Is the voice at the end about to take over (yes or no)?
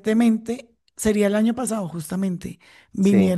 no